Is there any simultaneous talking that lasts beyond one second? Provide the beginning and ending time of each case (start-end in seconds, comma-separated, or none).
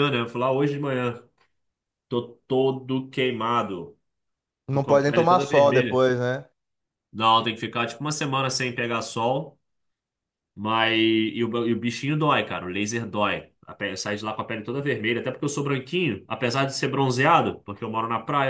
4.7-6.0